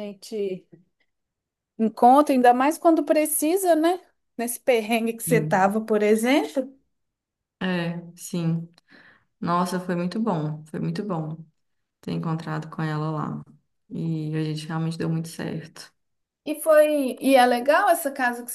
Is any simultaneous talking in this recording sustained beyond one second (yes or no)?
no